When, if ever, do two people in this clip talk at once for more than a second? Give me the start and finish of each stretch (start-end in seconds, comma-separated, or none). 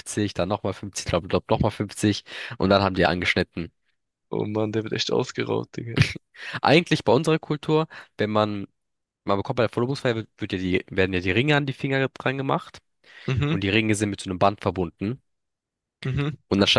none